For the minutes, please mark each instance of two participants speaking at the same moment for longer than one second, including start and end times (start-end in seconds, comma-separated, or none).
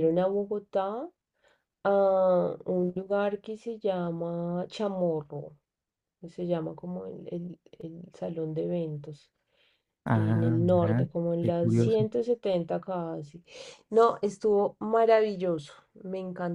10.1-12.1